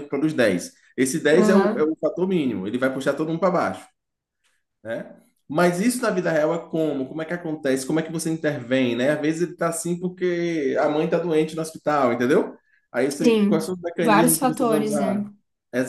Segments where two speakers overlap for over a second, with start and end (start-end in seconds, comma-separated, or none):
13.2-15.2